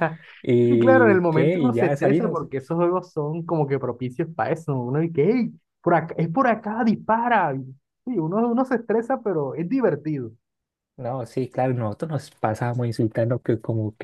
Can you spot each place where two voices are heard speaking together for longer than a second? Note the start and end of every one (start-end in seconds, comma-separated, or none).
0.7-2.5